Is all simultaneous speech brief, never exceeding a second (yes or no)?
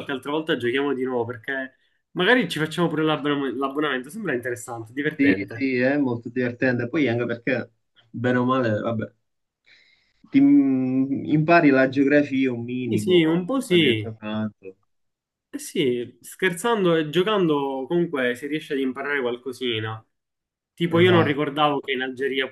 no